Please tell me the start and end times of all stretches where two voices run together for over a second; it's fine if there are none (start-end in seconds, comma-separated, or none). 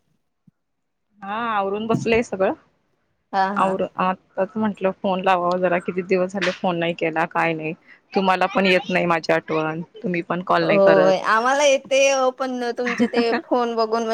none